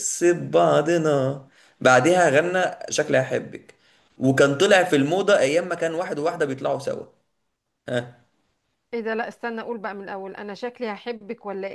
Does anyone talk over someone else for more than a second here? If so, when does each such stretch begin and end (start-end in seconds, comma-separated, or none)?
none